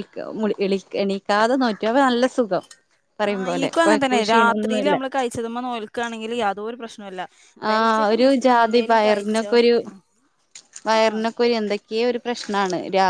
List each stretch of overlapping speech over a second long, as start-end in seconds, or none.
3.3-5.0, 7.7-9.5